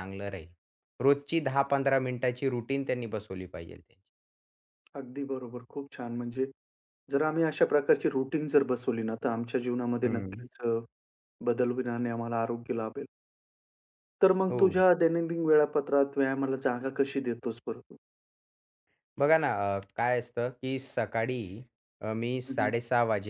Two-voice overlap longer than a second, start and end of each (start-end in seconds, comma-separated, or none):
none